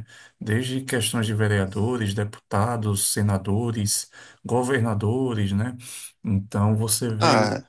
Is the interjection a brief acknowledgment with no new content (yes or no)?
yes